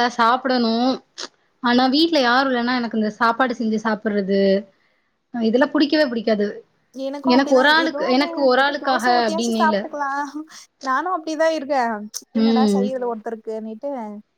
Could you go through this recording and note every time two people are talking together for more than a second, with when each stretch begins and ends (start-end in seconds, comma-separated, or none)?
7.6-9.8